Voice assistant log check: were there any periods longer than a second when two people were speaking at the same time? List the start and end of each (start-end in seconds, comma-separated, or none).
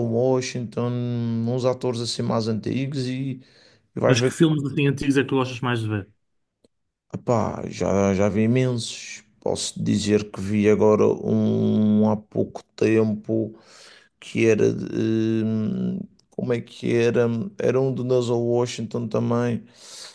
none